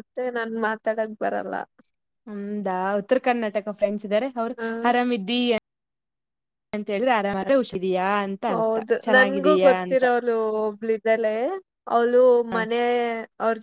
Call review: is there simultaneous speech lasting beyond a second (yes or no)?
no